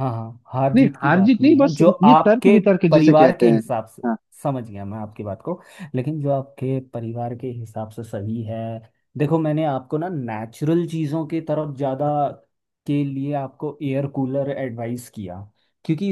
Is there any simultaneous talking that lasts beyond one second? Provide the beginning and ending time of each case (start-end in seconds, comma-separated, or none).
0.8-3.6